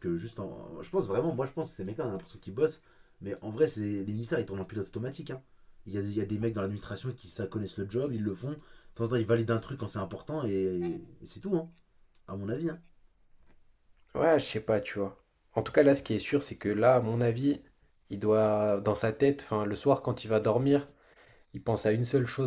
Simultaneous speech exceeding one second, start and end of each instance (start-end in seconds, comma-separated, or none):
none